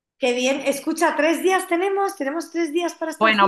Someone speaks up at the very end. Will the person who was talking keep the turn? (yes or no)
no